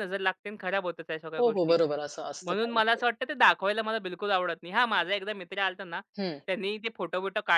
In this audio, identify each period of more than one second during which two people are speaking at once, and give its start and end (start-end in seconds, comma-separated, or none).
none